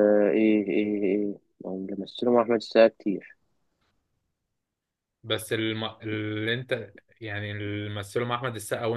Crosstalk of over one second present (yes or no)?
no